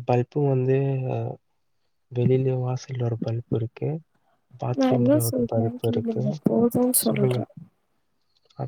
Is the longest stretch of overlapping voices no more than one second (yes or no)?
no